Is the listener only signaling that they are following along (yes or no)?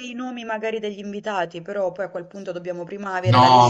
no